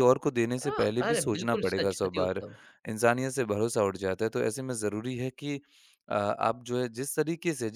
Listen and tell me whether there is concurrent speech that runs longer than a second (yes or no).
yes